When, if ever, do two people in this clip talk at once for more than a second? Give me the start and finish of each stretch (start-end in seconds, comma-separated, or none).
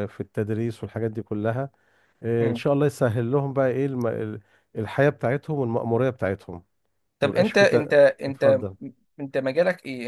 7.2-8.6